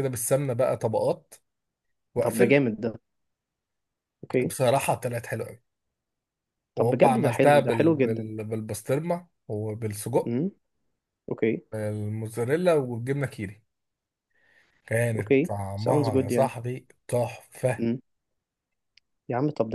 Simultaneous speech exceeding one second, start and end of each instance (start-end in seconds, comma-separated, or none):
6.8-8.3, 15.2-16.6